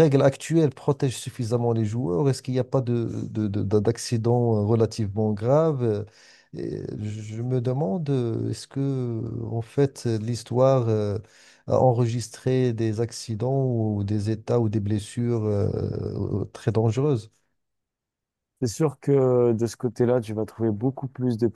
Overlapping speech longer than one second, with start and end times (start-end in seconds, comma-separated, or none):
none